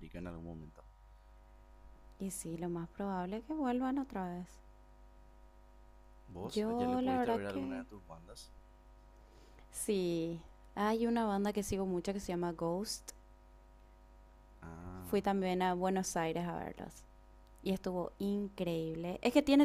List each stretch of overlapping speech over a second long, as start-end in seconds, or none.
6.5-7.8